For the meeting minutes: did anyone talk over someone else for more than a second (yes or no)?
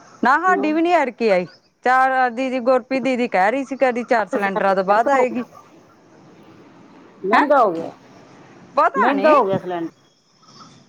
yes